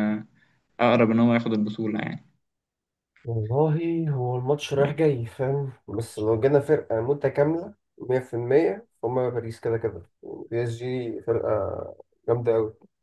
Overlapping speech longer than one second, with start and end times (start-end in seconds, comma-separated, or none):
none